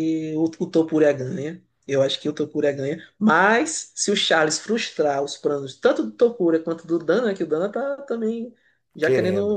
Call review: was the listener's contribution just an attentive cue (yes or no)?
yes